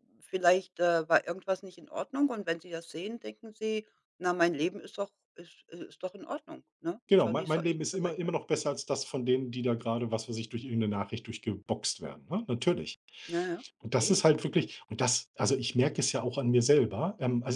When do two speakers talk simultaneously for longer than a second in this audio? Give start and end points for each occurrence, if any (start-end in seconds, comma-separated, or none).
7.1-8.4